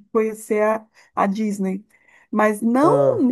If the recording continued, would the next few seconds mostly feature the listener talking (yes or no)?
no